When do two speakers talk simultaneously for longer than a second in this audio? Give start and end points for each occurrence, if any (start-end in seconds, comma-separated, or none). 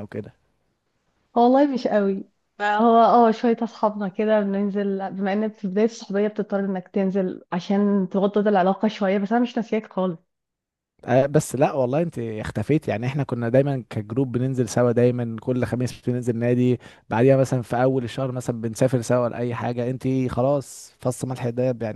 none